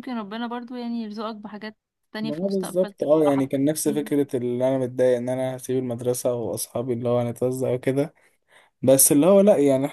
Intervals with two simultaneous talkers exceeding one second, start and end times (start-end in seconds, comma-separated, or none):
2.2-4.1